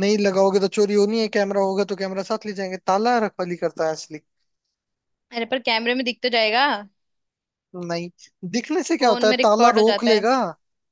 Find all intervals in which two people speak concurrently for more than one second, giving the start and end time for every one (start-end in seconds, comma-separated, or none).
9.0-10.3